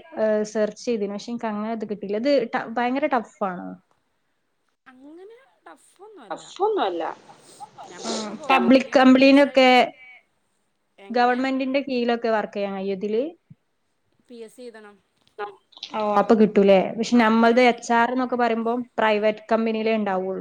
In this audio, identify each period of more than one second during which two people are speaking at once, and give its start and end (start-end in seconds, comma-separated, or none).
8.1-9.7